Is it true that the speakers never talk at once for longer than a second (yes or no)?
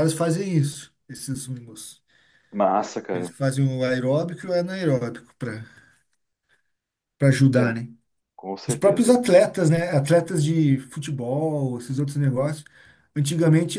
yes